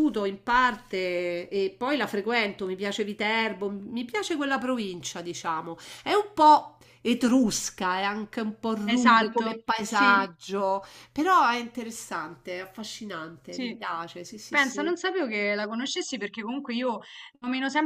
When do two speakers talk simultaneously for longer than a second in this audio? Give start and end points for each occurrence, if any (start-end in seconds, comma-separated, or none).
8.8-10.3